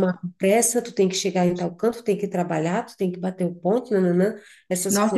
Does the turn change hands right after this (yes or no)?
yes